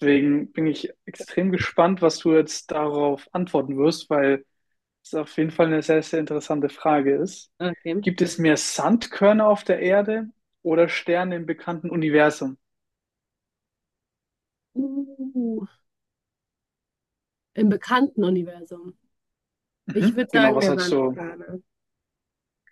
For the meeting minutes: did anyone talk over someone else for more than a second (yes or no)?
yes